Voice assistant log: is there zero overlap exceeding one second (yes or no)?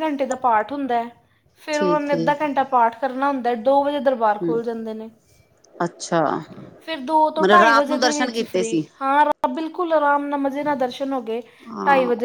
no